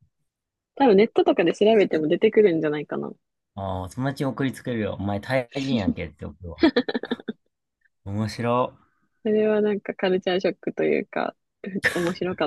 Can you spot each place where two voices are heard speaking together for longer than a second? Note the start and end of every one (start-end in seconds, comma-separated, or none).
none